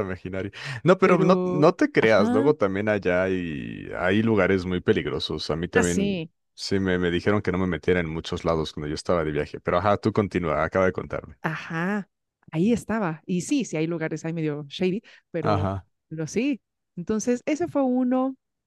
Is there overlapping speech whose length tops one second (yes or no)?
yes